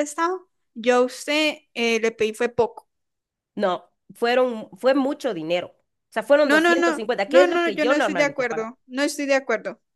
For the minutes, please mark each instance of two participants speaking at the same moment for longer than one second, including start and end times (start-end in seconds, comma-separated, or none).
6.4-8.7